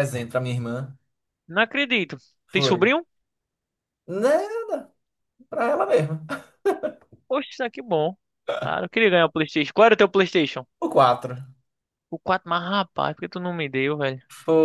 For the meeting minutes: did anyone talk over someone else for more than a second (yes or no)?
no